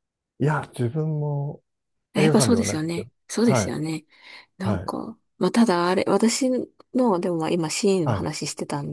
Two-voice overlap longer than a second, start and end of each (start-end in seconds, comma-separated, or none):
2.1-3.7